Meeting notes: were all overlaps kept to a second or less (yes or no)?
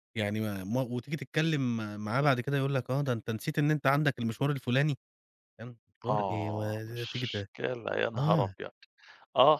no